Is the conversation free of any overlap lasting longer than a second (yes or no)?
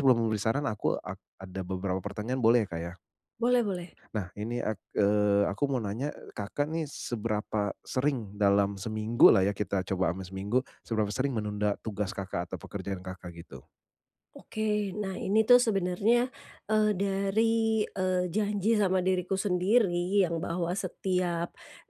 yes